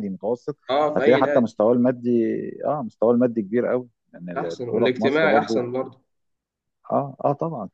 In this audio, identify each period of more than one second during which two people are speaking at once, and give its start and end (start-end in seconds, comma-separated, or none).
4.3-5.6